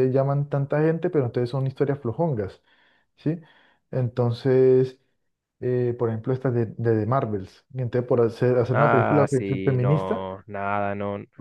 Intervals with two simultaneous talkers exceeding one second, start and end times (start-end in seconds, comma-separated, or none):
8.7-10.3